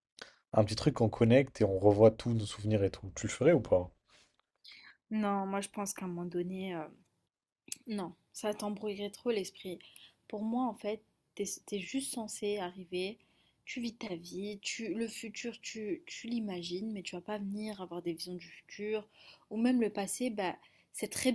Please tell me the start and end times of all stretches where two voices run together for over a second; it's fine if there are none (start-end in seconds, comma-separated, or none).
none